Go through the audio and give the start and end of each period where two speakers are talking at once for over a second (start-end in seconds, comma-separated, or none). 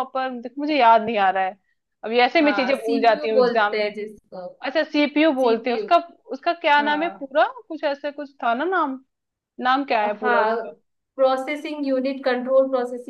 2.4-3.9